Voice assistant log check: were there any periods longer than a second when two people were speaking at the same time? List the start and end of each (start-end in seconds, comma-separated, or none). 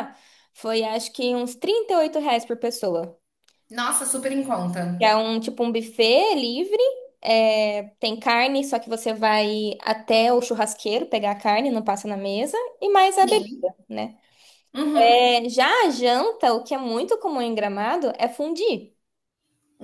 none